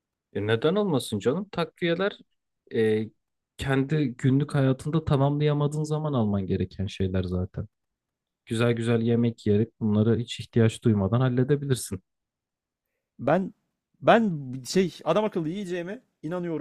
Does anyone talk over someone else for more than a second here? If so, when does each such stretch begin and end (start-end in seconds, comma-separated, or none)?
none